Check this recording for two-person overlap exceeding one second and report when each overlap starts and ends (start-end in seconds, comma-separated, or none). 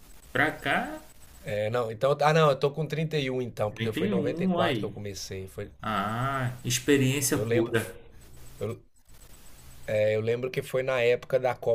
3.7-4.9